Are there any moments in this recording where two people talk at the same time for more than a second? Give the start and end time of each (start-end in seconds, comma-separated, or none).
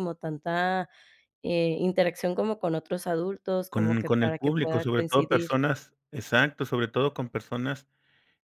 3.7-5.5